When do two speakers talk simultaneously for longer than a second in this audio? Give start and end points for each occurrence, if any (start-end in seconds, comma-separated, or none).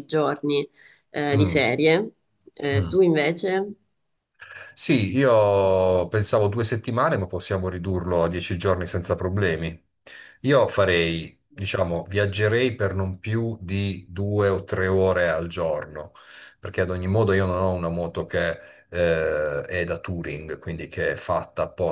none